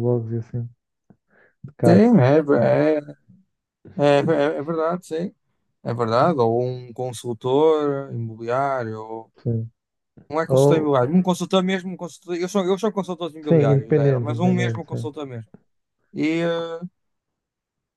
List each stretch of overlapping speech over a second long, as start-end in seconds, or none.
13.5-15.1